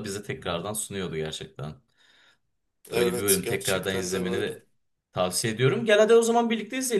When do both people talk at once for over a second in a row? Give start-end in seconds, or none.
2.9-4.6